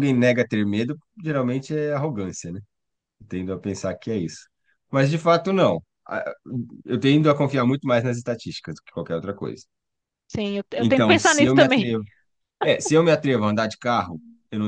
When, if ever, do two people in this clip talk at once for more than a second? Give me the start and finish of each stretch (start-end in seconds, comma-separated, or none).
10.8-12.0